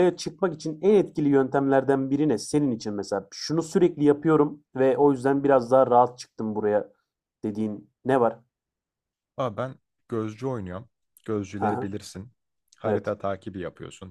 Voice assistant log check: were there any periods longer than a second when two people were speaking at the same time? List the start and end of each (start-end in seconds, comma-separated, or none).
none